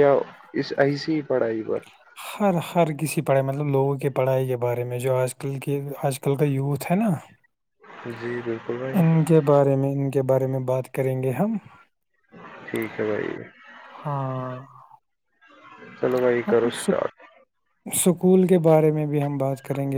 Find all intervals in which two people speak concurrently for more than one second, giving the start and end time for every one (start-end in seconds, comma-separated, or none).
none